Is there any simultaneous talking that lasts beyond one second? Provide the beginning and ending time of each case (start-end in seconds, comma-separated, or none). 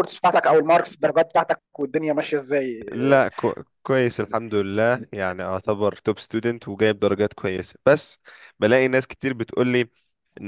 none